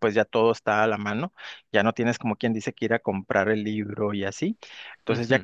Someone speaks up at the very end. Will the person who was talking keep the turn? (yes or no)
yes